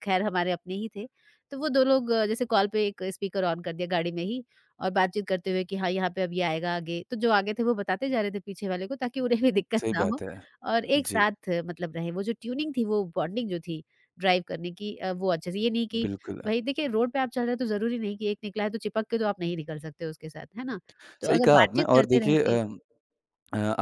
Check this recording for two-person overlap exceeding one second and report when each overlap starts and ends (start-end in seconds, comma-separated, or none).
21.3-22.6